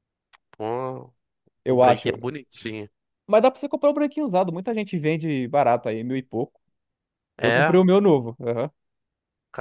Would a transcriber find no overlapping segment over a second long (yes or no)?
yes